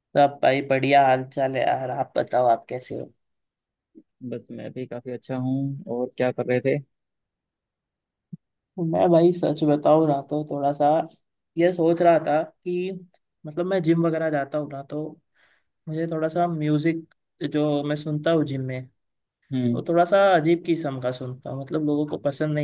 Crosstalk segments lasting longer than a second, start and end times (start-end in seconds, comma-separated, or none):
none